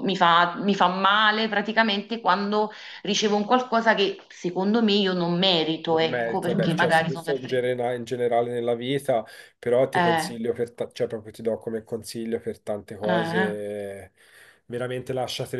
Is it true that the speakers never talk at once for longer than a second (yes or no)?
no